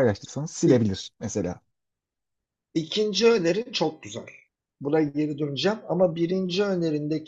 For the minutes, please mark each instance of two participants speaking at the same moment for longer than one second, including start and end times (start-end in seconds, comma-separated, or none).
none